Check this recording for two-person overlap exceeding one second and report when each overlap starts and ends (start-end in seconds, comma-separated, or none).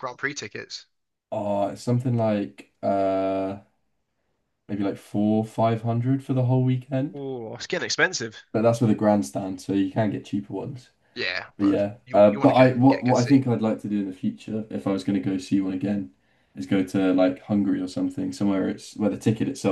11.6-13.4